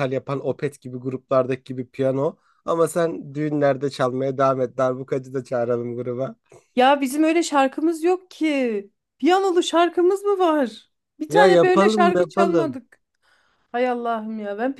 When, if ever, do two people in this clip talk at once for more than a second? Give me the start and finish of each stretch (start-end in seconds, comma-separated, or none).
11.3-12.8